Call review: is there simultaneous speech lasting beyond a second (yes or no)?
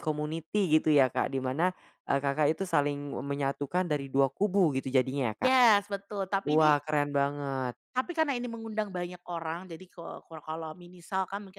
no